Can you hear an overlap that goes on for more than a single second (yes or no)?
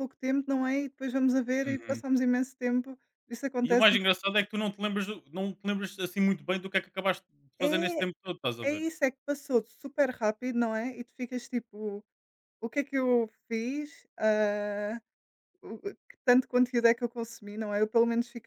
no